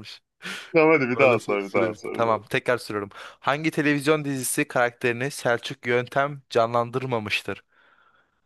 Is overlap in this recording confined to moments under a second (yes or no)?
no